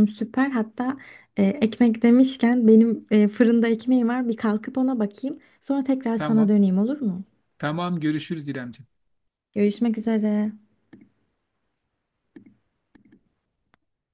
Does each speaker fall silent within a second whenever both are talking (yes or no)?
yes